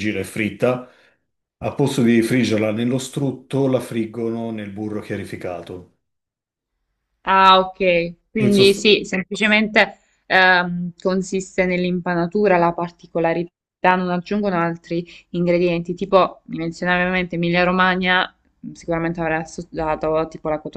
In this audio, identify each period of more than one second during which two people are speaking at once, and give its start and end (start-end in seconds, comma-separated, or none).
none